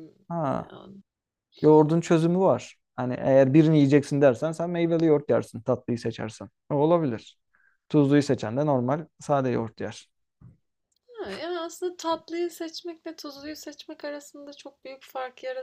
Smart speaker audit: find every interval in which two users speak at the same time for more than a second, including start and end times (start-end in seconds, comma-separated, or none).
none